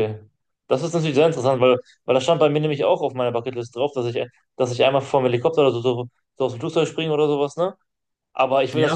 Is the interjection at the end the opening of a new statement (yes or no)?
yes